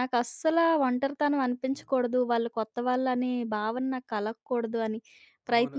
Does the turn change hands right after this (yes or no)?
yes